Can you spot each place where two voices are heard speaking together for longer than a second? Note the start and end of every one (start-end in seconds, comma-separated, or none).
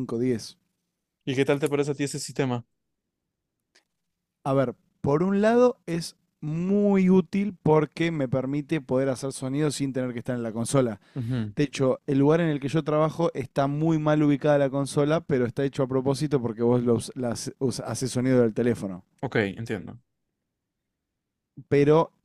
none